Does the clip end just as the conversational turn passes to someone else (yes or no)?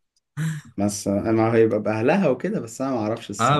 yes